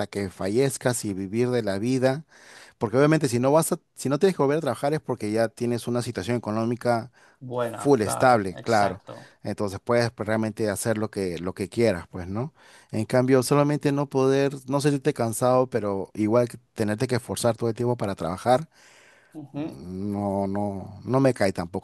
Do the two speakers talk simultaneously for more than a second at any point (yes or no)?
yes